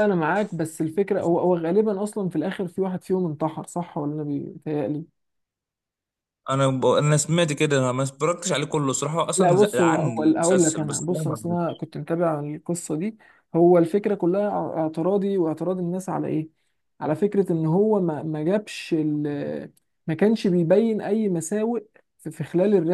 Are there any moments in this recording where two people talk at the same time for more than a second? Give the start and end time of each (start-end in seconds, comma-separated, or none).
9.4-11.8